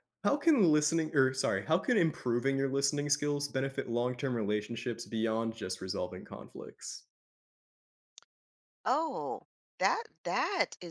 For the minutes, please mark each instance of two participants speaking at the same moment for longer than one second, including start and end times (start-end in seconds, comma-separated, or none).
none